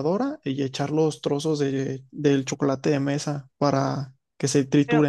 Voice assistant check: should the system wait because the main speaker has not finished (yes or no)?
no